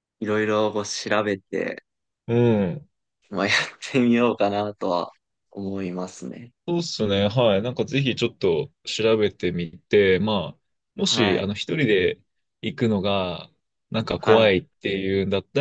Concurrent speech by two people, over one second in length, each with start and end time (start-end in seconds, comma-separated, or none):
none